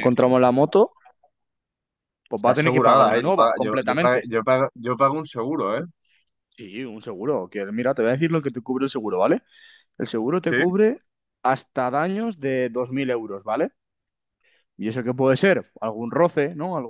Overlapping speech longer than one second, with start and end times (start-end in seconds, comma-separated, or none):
2.4-4.3